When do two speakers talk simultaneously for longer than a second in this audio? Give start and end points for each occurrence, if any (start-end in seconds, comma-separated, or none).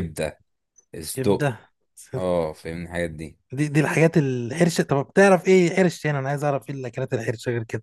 none